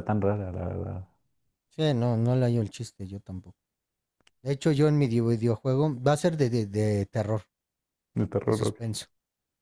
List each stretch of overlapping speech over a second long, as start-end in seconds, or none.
none